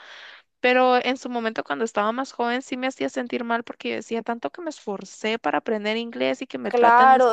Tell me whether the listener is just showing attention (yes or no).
no